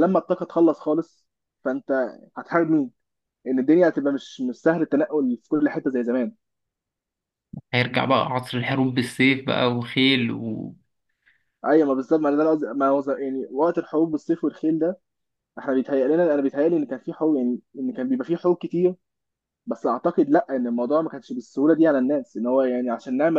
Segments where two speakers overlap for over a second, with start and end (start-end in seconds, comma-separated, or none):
none